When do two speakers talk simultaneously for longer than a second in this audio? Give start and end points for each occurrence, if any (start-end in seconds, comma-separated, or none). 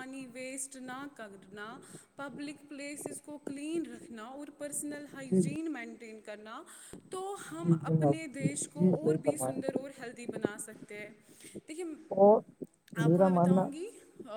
7.6-9.7